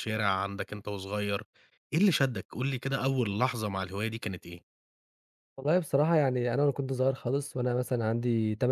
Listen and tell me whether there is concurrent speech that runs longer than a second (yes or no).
no